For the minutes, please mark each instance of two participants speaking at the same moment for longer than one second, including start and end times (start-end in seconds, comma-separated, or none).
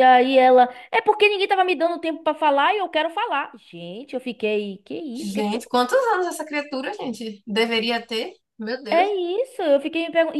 none